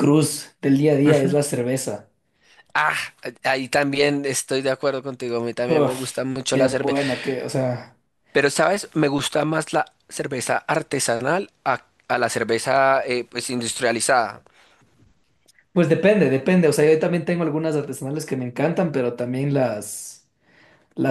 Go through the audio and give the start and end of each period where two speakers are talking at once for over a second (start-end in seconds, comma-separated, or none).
5.7-7.0